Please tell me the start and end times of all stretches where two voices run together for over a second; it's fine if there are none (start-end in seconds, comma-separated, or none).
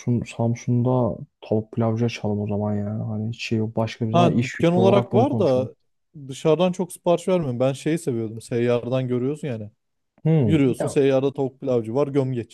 4.1-5.7